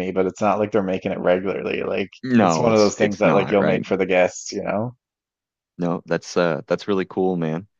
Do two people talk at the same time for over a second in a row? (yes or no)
yes